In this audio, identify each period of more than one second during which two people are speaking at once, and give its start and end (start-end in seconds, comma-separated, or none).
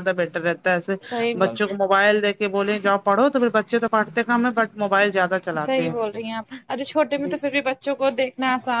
none